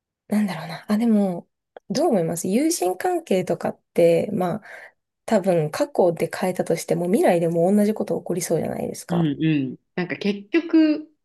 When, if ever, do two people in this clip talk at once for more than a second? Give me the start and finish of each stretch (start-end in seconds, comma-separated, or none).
none